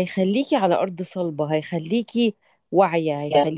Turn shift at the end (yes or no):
no